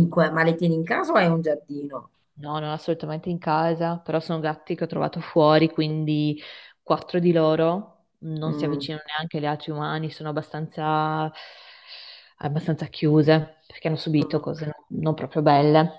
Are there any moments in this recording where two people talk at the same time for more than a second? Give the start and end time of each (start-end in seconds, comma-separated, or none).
none